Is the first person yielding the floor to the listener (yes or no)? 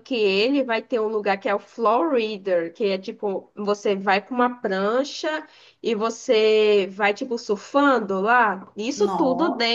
no